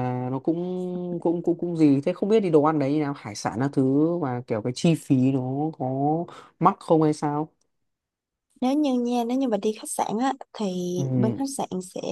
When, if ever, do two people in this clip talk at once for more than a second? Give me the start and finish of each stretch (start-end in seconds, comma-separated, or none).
none